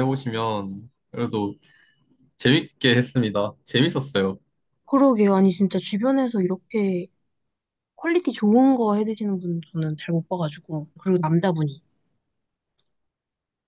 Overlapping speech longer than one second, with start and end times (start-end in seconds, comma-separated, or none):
none